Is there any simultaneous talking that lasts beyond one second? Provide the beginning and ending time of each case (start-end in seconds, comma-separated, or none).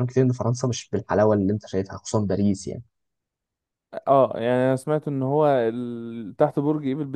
none